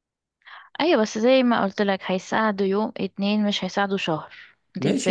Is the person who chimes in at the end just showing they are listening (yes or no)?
no